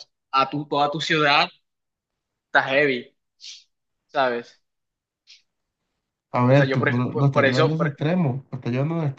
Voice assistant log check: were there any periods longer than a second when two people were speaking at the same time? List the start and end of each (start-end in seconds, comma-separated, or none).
6.5-8.0